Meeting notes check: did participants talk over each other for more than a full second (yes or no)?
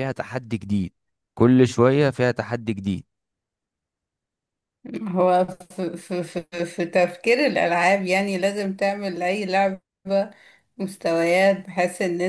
no